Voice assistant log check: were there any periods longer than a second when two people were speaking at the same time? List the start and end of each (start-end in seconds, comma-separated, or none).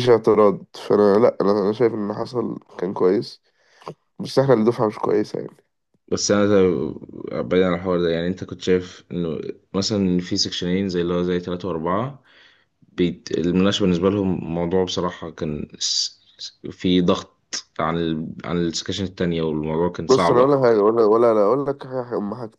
none